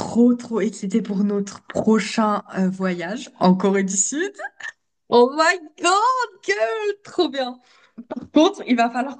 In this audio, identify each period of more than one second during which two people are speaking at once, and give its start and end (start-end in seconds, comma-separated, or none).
none